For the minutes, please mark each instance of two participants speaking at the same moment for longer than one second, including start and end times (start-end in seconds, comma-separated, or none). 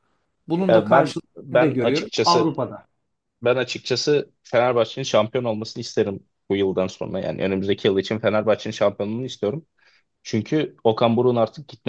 0.7-2.5